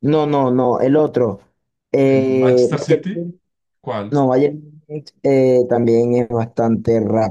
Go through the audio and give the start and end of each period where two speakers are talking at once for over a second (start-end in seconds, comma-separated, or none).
2.0-3.3